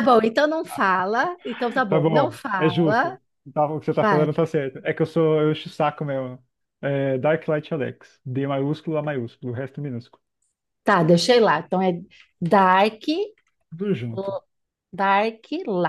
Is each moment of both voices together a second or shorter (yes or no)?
no